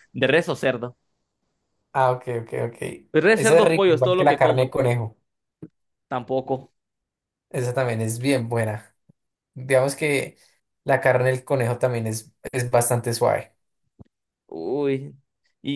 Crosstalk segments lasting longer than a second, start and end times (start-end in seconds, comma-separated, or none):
3.4-4.7